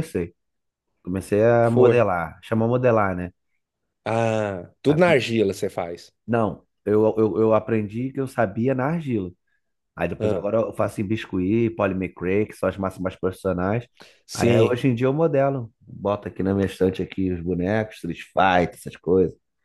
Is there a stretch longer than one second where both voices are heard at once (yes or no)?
no